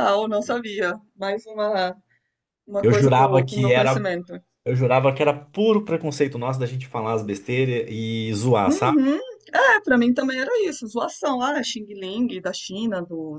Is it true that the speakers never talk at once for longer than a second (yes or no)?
no